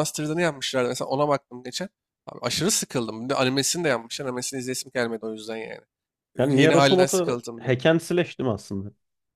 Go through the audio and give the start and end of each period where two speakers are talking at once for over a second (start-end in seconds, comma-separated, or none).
6.4-7.8